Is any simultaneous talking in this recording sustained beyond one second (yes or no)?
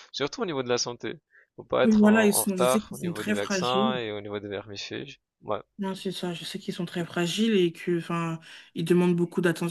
yes